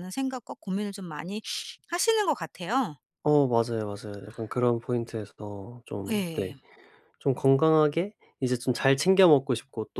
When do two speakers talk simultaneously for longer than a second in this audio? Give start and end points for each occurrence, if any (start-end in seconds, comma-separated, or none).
none